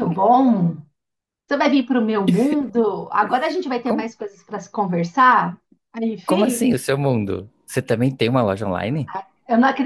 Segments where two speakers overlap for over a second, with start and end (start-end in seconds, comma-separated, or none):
none